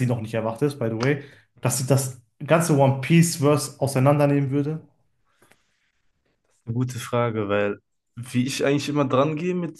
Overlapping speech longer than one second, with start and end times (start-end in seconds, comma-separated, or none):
none